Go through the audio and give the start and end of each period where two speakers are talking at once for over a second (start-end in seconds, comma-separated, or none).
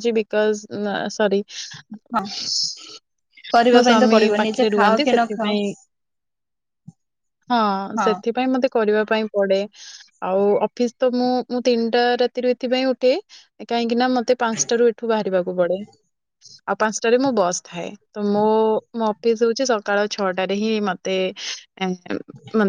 3.7-5.5